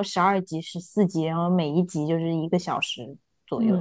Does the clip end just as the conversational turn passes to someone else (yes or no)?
yes